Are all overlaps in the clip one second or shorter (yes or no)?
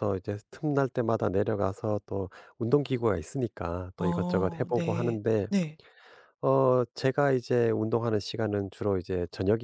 no